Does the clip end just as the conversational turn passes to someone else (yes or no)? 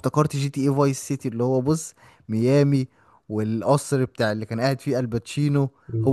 yes